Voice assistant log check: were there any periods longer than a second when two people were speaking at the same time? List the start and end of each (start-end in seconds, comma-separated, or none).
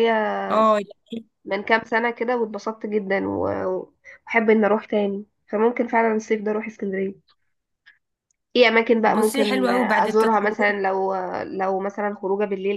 9.0-10.8